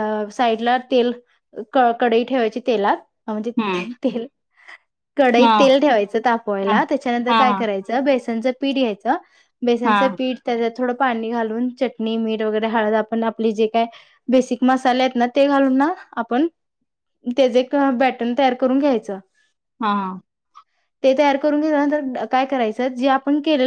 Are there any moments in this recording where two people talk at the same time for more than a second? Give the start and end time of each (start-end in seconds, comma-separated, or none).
none